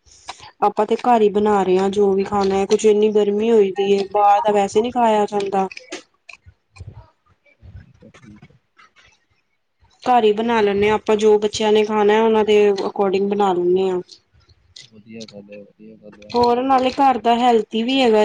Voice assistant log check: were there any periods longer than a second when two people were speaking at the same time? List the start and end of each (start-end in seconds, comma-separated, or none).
none